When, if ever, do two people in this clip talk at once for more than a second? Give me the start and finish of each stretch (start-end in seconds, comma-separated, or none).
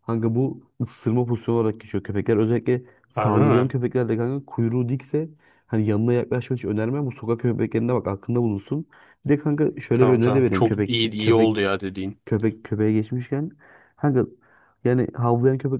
9.9-11.6